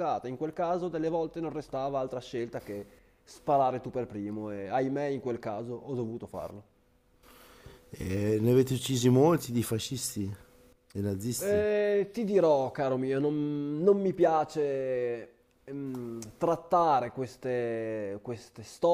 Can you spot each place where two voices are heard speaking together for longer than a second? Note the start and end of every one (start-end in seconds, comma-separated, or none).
none